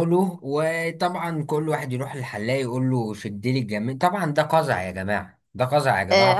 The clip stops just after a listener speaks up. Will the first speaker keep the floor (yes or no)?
no